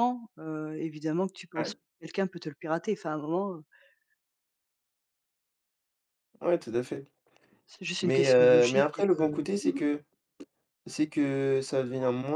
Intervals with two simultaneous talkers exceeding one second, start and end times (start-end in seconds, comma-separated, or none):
8.0-9.5